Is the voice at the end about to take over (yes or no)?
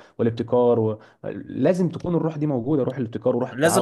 yes